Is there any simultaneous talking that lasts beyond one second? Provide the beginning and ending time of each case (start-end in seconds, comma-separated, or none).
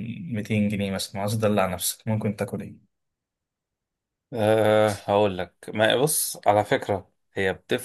none